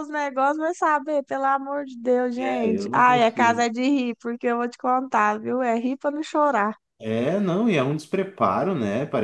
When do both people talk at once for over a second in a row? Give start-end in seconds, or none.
2.4-3.7